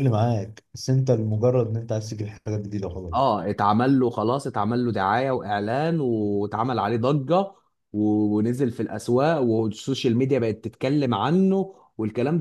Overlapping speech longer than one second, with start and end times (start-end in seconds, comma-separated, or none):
none